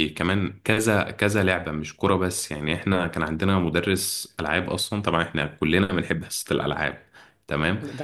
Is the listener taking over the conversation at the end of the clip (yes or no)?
no